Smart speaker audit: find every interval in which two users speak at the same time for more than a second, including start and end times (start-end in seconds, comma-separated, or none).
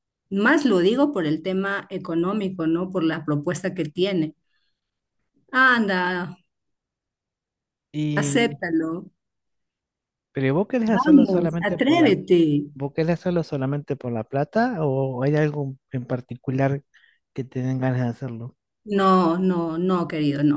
10.9-12.1